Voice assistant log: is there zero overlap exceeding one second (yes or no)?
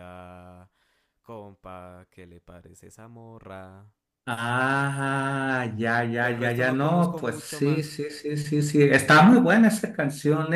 no